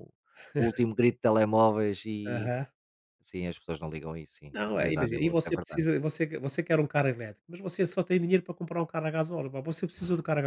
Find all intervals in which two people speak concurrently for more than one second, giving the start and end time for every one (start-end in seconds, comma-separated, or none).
4.5-5.8